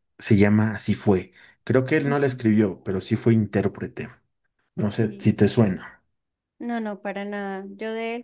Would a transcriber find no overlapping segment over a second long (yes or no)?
yes